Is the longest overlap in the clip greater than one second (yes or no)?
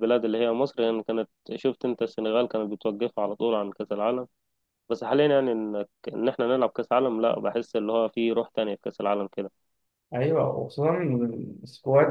no